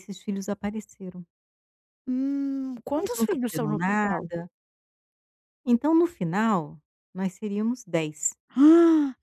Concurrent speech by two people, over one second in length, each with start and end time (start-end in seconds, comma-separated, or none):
2.9-4.3